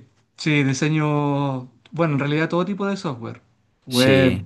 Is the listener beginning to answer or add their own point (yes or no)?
no